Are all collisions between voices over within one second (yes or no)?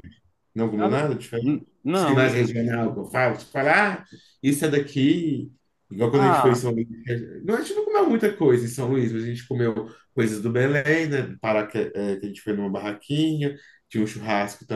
no